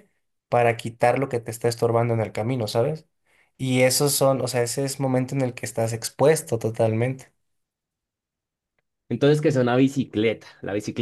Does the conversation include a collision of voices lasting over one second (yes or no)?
no